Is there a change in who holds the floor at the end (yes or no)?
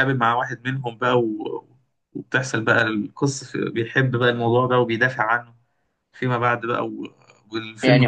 yes